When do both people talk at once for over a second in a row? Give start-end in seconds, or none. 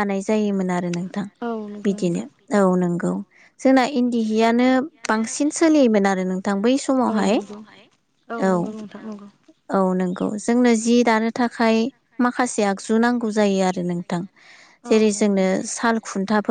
none